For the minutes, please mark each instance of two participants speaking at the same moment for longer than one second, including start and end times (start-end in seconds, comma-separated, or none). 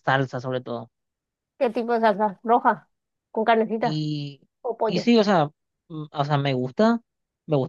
none